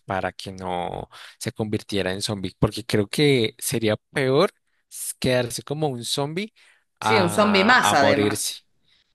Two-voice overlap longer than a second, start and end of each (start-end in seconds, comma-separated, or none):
7.0-8.6